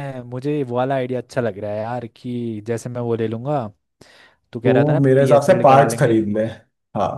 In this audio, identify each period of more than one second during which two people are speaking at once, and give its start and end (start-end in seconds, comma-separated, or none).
4.6-6.1